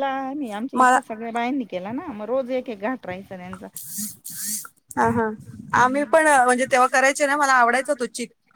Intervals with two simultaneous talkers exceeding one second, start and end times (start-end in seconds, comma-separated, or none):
none